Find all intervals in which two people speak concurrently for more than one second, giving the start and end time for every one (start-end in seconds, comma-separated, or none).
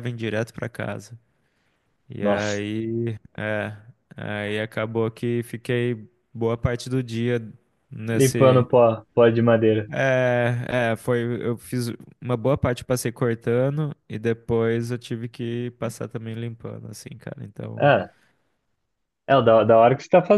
none